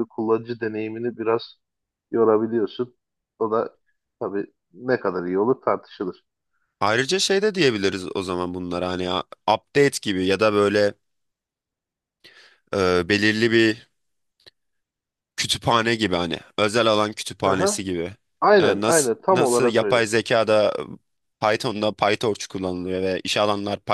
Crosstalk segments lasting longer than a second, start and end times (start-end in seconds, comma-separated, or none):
18.6-20.1